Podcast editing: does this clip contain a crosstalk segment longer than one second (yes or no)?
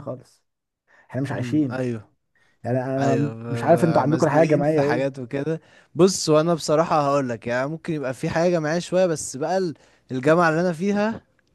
yes